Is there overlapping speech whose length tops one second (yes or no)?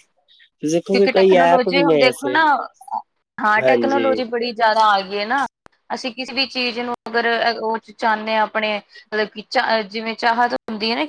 yes